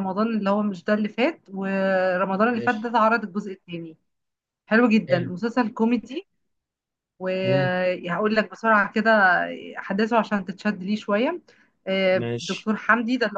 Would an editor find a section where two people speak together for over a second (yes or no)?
no